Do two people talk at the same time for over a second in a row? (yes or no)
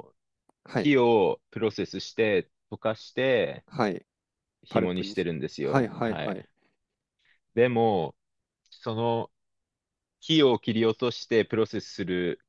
yes